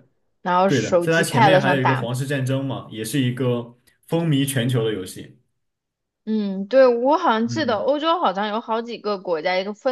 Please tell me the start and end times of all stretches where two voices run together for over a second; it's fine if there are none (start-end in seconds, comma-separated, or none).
0.7-2.1